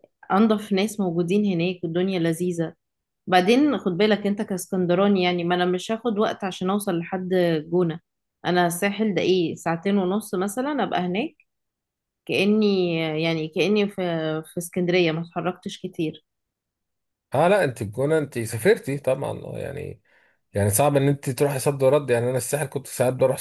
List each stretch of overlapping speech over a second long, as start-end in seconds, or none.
none